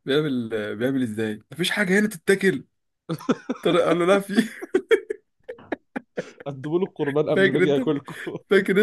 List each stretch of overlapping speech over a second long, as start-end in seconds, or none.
none